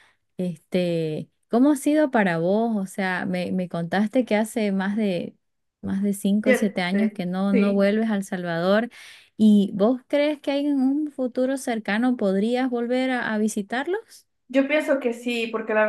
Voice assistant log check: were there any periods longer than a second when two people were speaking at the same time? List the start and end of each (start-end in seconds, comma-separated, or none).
6.4-7.9